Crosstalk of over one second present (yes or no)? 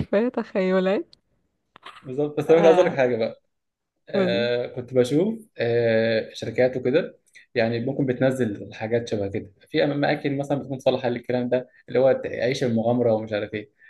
no